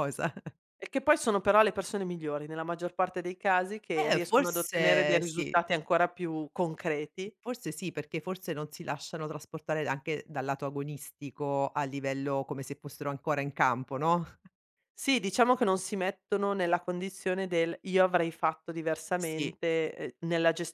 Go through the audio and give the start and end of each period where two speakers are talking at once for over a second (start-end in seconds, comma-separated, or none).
4.0-5.6